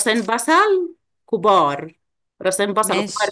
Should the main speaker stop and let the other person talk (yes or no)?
no